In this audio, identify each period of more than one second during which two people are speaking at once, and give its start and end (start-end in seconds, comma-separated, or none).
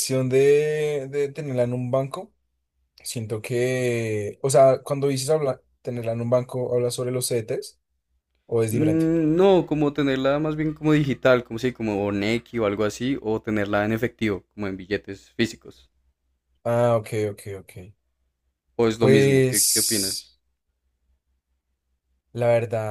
19.0-20.3